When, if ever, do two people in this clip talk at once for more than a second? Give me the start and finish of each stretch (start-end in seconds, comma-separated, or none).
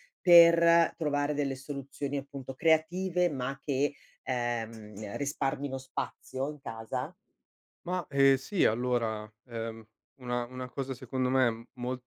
none